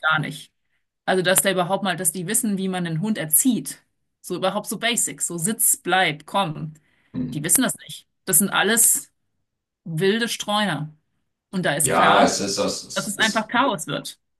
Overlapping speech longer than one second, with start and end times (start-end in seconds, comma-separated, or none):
none